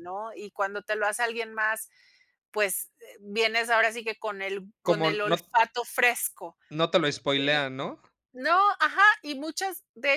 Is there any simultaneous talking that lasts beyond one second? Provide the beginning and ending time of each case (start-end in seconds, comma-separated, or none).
none